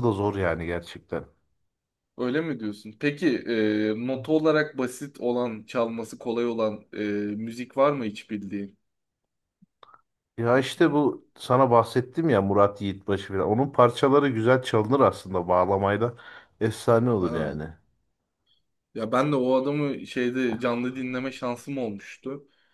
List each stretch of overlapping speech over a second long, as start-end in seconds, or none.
none